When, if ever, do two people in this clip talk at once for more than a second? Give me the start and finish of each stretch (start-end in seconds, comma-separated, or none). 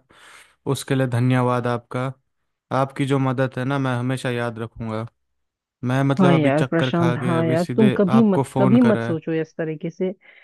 6.2-9.2